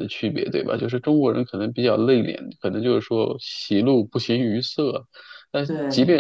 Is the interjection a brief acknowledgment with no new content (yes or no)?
yes